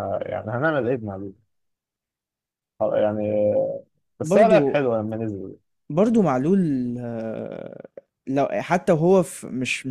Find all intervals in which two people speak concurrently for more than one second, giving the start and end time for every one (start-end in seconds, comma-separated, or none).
none